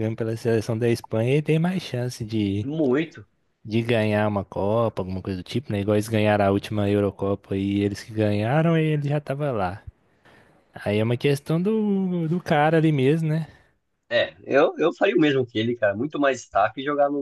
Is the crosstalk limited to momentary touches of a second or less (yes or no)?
yes